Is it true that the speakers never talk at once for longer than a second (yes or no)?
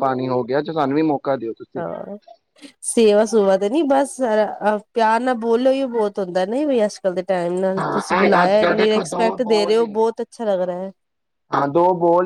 no